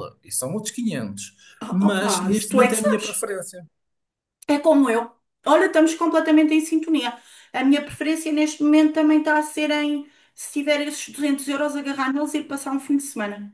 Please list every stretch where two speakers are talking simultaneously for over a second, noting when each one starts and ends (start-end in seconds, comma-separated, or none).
1.7-3.2